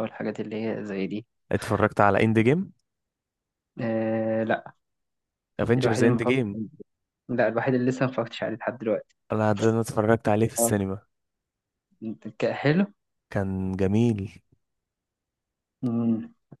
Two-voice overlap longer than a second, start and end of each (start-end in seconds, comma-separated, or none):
none